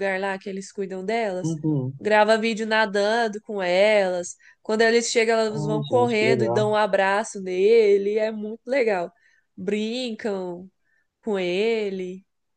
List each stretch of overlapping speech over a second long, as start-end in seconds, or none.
5.5-6.7